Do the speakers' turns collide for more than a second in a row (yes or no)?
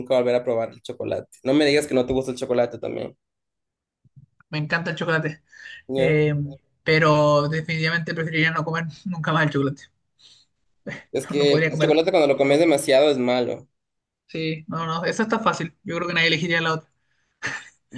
yes